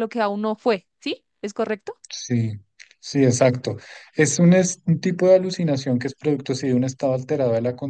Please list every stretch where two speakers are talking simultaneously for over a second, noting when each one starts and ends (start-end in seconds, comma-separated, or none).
none